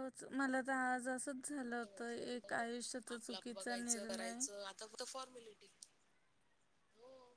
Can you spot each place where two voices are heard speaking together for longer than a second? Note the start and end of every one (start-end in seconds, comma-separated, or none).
3.2-4.4